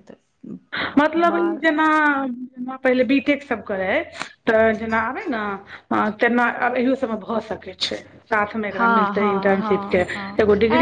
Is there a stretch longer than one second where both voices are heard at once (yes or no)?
yes